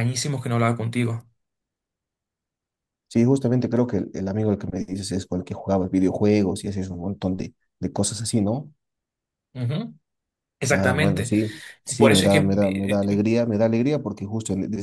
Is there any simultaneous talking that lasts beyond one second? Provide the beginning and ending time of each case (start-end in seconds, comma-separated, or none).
12.0-13.2